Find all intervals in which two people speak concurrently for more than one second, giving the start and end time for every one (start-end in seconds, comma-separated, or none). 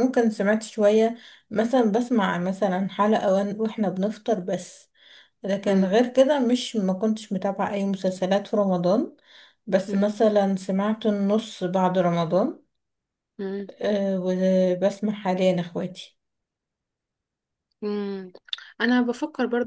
none